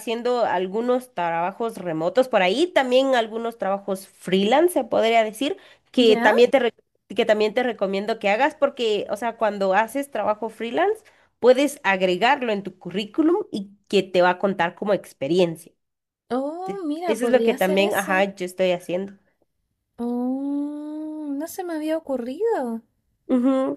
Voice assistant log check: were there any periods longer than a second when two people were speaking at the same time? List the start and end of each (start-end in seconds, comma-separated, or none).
16.6-18.3